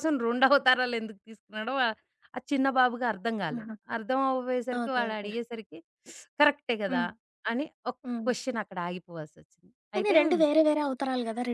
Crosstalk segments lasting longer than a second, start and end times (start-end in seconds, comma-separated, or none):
none